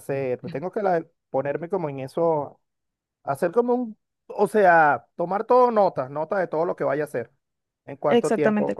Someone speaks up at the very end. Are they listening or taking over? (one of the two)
taking over